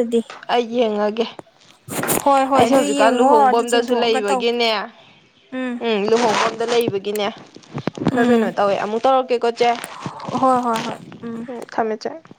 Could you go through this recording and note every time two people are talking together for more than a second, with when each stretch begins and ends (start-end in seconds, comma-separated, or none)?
2.5-4.4